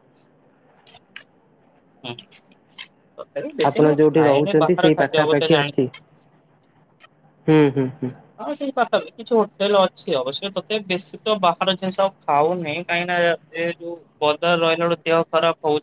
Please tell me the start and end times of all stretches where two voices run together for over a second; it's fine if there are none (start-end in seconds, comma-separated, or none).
3.7-5.8